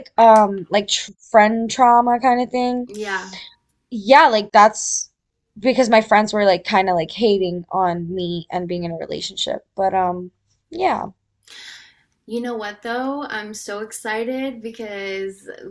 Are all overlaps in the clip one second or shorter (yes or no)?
yes